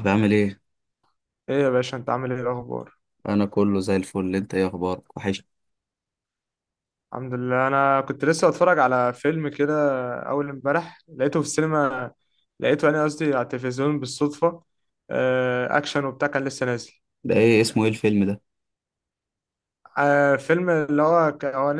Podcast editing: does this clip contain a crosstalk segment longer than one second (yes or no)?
no